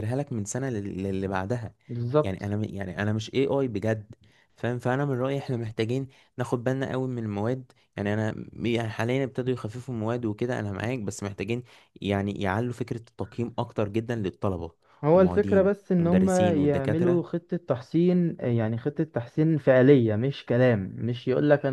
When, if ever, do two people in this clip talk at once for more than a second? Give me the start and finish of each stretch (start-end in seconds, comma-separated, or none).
15.1-17.2